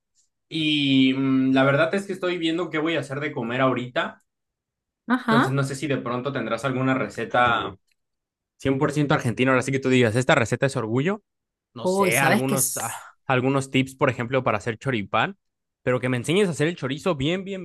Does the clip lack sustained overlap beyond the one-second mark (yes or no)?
no